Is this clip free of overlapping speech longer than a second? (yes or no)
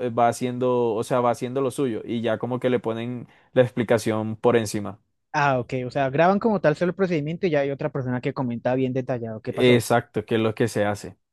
yes